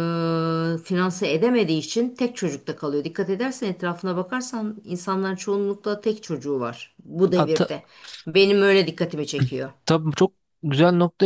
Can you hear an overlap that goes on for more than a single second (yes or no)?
no